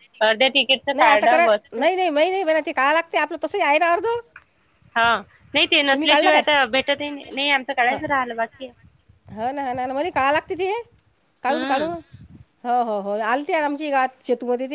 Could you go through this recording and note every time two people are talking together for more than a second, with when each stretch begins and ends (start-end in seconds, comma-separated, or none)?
none